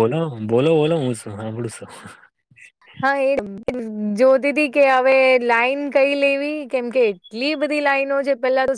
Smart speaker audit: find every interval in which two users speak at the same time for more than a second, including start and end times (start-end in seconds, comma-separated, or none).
none